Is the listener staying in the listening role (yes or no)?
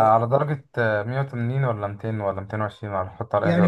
no